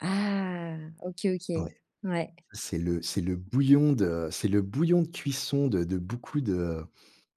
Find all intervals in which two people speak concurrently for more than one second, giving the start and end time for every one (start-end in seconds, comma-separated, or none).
none